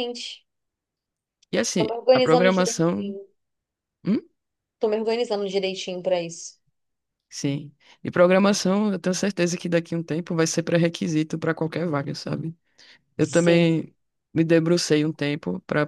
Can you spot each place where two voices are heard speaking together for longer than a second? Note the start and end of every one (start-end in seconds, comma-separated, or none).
1.8-3.2